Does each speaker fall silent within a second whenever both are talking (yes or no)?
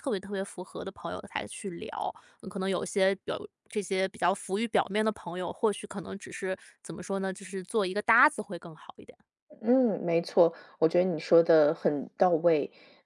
yes